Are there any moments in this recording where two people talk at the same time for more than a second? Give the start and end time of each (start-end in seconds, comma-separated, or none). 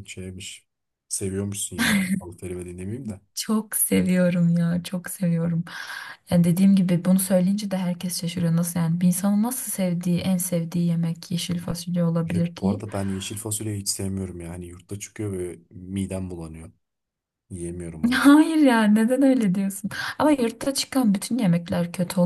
none